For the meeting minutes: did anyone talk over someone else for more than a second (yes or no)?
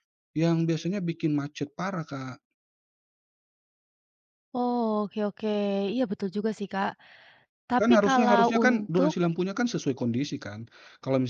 yes